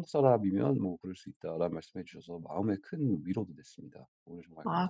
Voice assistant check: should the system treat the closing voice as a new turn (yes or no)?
yes